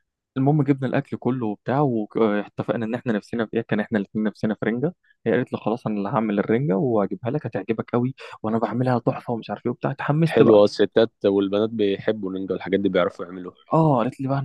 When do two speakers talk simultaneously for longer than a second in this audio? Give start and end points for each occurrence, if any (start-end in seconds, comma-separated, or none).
none